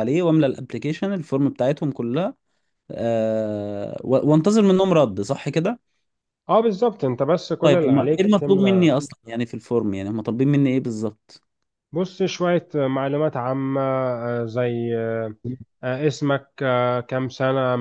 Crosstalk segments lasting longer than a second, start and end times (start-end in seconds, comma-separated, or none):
7.6-9.0